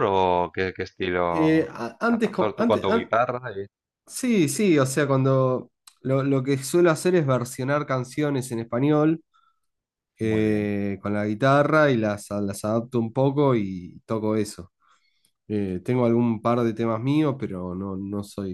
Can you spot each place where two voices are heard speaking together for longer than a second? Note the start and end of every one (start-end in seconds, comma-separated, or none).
1.3-3.1